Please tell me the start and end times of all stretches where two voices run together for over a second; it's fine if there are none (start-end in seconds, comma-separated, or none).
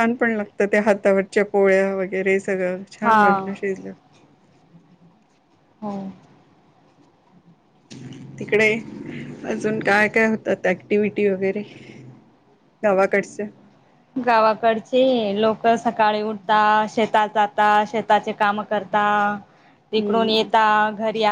none